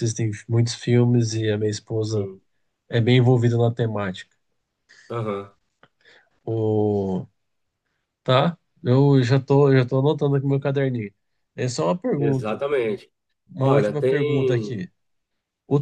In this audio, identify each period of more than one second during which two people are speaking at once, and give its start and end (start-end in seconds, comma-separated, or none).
13.6-14.8